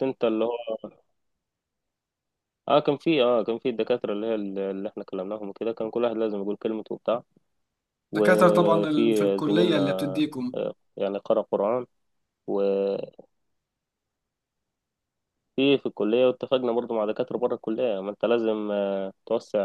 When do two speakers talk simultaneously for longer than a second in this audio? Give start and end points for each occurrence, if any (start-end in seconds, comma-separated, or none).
8.1-9.8